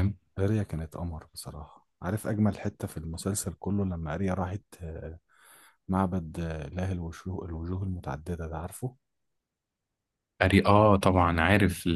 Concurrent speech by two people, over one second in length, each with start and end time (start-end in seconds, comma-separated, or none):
none